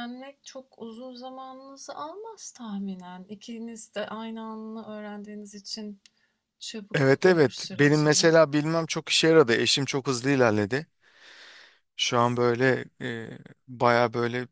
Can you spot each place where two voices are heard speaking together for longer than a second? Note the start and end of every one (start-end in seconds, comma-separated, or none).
6.9-8.5